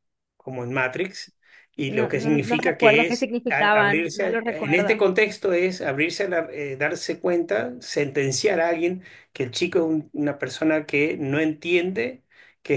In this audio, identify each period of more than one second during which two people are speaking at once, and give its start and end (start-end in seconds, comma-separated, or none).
1.9-5.0